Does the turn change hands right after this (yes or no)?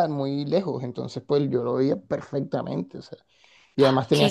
no